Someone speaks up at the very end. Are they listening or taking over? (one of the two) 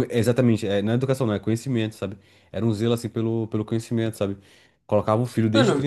listening